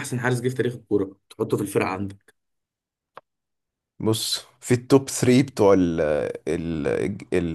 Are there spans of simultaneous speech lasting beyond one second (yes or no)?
no